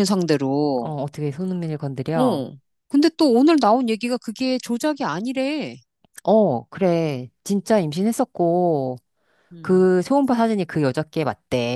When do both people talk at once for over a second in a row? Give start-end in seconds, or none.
none